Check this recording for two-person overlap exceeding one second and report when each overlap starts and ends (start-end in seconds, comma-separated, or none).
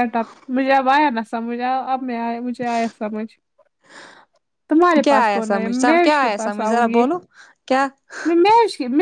5.0-7.0